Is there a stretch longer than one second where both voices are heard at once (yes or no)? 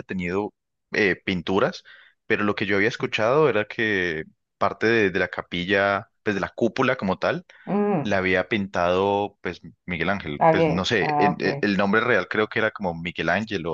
yes